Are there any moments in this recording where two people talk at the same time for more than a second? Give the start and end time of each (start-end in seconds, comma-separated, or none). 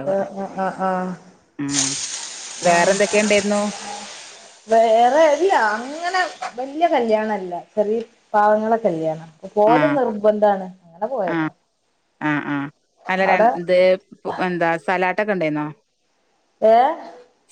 none